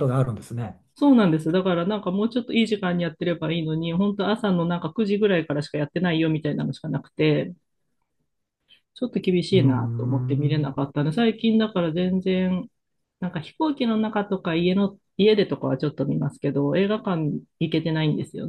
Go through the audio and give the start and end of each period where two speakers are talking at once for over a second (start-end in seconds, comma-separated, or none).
9.5-10.7